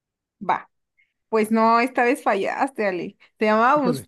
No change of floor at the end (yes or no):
yes